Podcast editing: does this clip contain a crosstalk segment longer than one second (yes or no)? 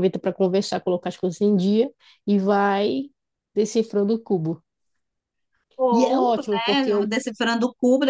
yes